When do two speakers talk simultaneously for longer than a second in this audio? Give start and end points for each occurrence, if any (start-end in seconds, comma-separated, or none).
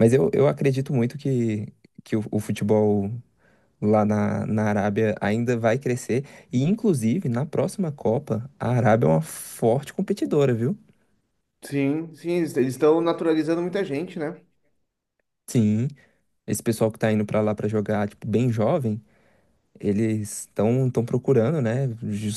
none